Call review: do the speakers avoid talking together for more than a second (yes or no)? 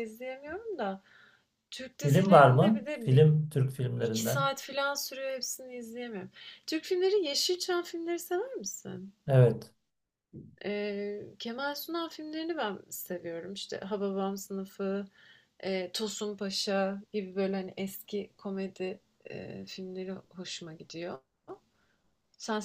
no